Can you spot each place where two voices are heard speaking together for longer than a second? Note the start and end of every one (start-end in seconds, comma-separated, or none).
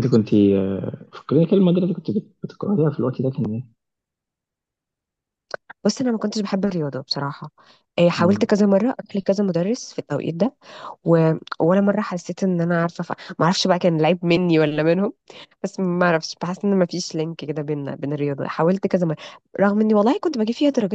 none